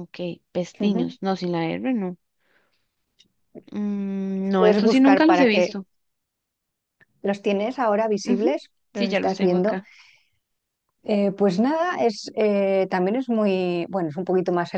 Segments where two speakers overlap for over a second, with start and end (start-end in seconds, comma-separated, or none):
4.5-5.8, 8.2-9.8